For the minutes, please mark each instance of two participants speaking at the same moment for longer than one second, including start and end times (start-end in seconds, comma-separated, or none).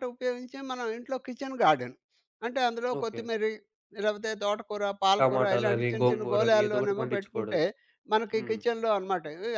5.2-7.6